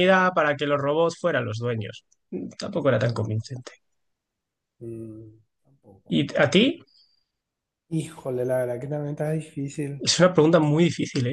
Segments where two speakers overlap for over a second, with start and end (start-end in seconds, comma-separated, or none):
none